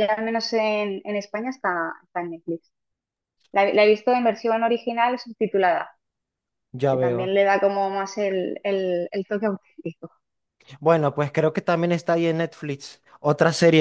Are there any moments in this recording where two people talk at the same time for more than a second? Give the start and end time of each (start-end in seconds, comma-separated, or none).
none